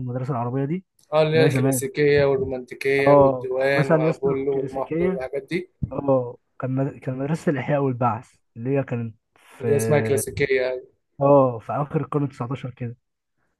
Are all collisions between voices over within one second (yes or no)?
no